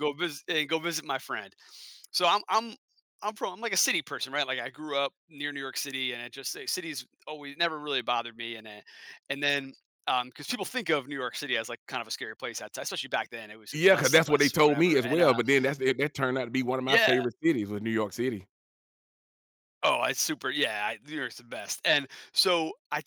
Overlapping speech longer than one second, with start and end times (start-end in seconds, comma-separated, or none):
13.7-15.4